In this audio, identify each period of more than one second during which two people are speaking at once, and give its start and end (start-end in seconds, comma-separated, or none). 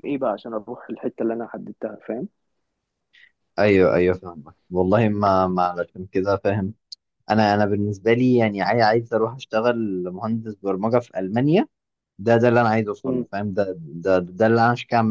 none